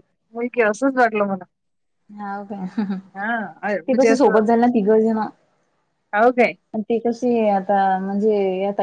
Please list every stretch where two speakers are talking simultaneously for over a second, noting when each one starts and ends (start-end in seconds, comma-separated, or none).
none